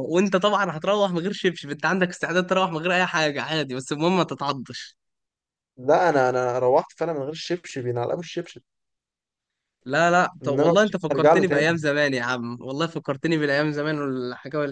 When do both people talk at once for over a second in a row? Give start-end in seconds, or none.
10.4-11.8